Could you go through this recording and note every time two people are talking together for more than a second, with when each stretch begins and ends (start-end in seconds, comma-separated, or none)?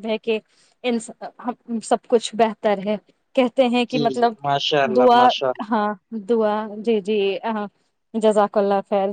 none